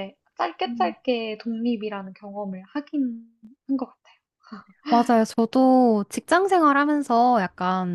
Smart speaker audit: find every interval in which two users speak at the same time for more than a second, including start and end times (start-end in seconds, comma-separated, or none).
none